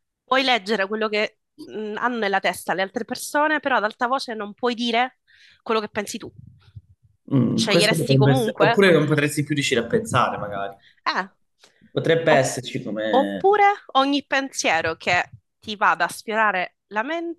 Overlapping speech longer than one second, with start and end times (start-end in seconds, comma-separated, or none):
7.5-8.8